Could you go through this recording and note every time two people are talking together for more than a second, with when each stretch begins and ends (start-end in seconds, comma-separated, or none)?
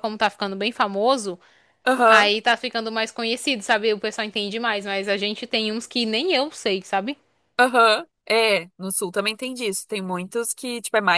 none